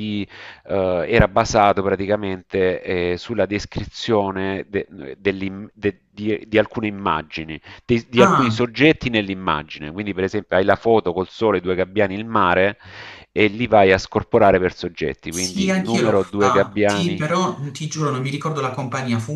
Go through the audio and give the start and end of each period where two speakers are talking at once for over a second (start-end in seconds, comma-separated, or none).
15.3-17.2